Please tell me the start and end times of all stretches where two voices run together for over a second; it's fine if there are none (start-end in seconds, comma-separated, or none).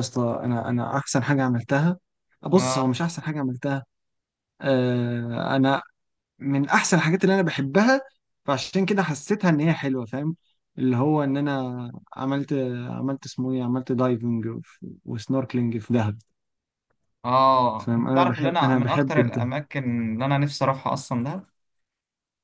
17.8-19.5